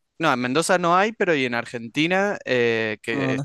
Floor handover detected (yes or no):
no